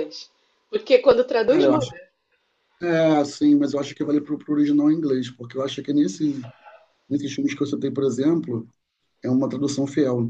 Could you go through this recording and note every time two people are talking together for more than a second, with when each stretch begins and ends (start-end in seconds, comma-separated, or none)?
none